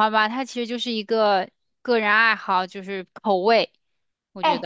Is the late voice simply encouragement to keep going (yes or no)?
no